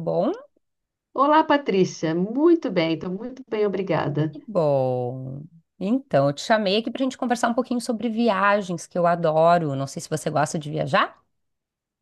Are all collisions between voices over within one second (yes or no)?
yes